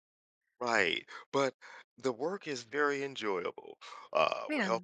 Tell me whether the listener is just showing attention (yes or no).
yes